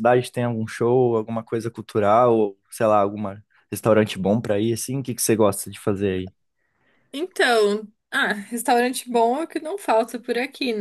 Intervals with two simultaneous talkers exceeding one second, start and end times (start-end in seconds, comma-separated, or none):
none